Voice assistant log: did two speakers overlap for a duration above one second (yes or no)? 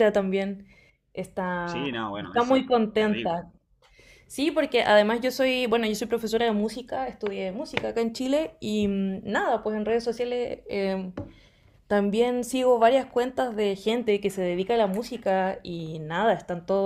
yes